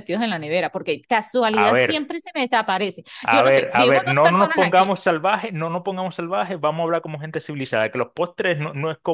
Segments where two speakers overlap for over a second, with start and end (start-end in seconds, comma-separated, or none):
3.2-5.0